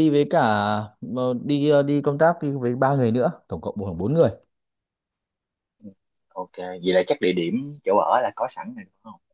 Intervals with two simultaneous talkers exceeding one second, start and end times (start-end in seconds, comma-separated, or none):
none